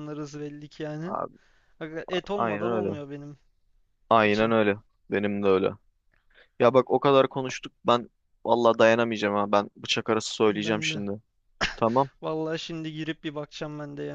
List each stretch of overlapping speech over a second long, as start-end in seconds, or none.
none